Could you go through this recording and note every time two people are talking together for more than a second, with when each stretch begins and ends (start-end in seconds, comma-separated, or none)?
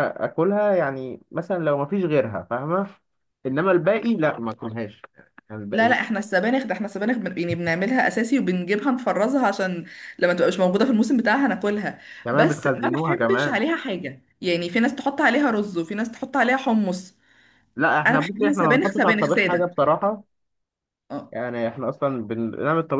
12.2-13.6, 18.1-19.8